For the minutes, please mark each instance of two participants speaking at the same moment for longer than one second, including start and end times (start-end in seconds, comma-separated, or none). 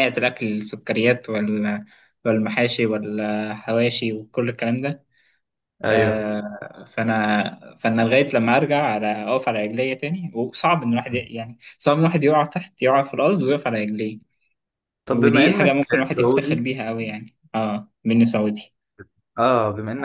15.1-16.7